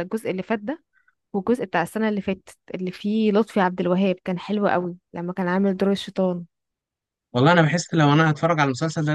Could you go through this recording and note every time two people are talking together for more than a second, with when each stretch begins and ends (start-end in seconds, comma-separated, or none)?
none